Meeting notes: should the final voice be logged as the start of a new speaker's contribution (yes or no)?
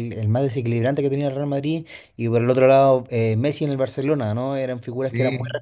no